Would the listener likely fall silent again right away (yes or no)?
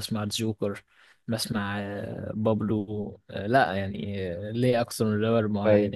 no